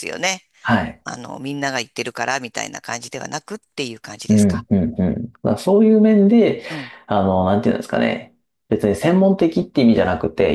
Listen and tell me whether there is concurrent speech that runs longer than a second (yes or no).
no